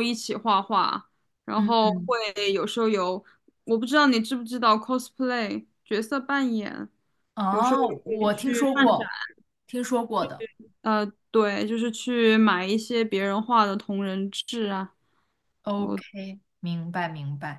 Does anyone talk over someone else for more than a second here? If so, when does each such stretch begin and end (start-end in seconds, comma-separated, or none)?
7.5-9.1